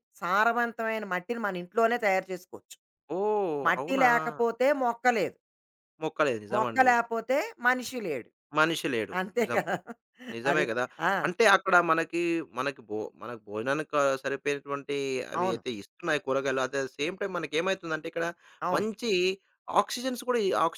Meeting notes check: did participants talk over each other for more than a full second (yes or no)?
no